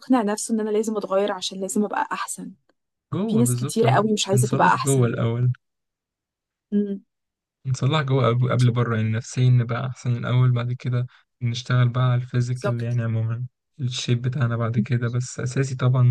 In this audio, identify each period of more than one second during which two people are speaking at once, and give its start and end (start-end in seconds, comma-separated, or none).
3.3-5.1